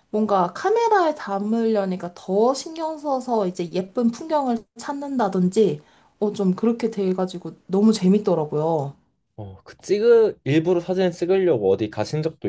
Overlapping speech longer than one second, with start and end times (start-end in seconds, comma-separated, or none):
none